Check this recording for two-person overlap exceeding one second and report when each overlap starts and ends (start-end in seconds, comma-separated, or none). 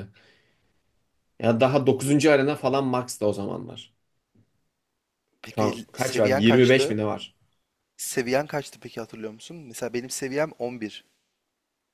5.5-7.0